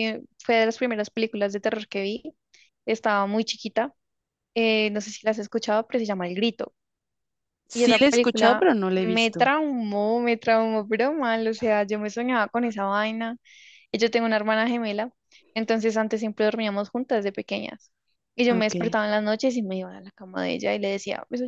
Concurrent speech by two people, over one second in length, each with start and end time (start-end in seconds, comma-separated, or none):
7.7-9.5